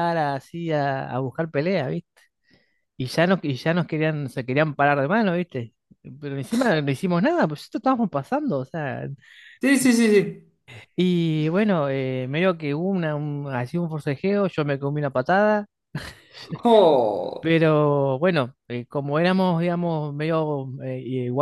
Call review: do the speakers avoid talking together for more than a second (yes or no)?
yes